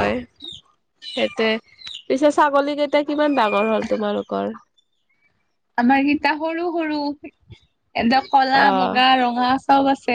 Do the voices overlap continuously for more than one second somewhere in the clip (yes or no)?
no